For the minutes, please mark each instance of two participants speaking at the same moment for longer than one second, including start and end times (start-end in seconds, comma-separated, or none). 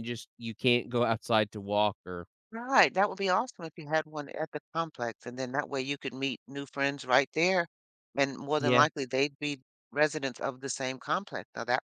none